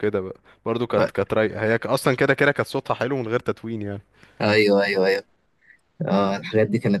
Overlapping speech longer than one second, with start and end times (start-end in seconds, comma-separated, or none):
none